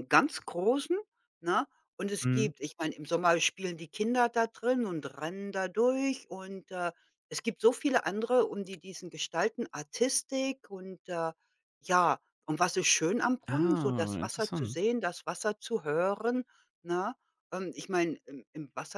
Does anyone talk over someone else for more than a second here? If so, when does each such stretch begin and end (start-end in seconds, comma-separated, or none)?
13.5-14.8